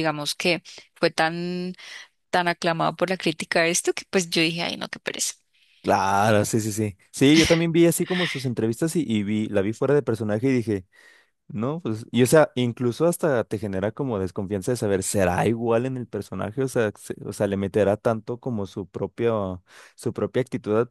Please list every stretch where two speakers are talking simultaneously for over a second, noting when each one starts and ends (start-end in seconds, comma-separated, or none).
none